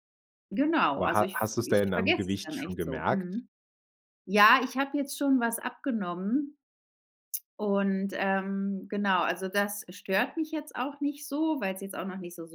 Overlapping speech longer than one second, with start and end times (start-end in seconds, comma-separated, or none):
1.0-3.4